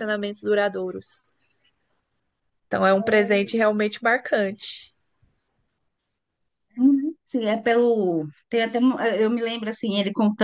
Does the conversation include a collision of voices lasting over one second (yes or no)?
no